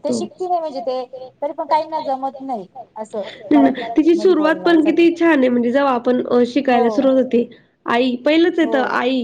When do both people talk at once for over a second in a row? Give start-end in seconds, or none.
3.5-5.0